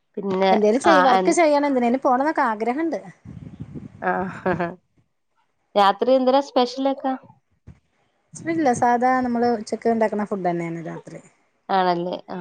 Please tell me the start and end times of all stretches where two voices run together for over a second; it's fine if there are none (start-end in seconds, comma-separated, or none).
none